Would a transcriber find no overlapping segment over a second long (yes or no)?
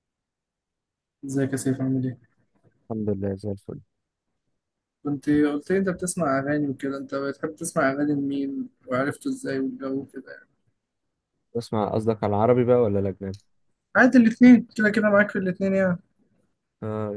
yes